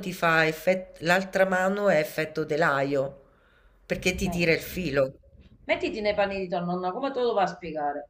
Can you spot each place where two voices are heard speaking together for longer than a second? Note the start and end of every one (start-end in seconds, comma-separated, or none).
none